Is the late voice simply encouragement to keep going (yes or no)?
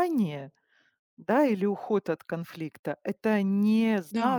yes